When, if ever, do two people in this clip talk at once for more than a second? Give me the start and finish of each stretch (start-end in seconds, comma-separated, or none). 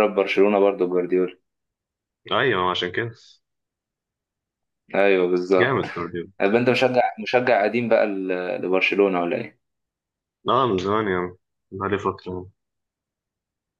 none